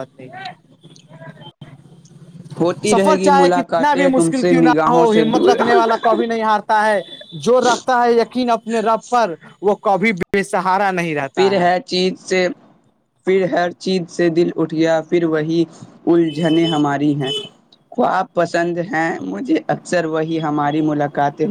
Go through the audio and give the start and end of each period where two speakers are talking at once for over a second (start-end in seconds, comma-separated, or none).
2.9-5.5